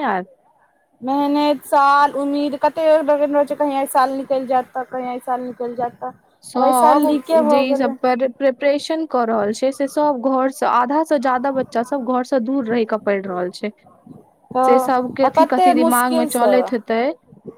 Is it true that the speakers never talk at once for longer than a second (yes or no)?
no